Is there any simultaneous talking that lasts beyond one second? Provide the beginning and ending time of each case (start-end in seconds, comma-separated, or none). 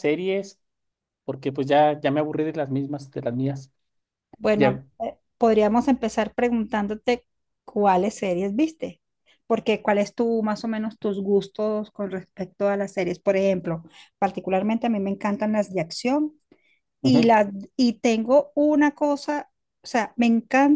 none